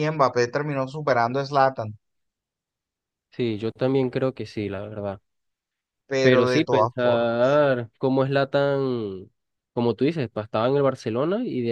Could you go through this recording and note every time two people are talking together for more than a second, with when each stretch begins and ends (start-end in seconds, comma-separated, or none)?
6.2-7.6